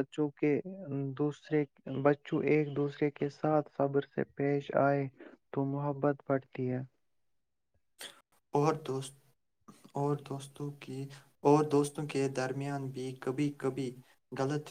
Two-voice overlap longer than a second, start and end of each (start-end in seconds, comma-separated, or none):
none